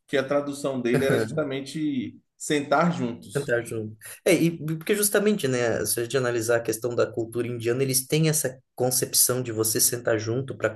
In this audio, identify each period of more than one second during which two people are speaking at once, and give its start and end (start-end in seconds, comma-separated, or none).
none